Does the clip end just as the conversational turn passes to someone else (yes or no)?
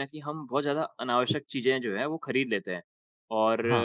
no